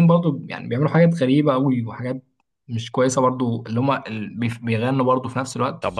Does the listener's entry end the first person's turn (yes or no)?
yes